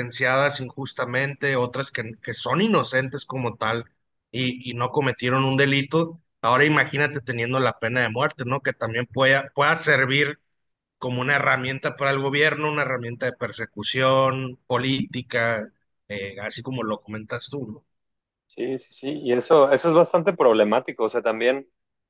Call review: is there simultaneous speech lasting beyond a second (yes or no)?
no